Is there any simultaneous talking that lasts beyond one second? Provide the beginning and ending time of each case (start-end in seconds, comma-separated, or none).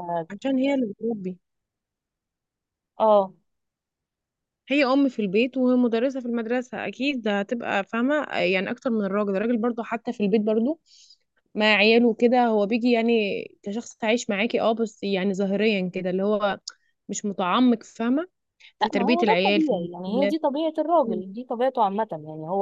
18.8-20.4